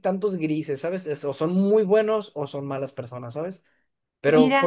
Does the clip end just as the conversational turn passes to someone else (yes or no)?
no